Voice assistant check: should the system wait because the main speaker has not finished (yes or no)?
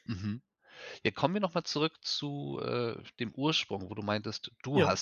yes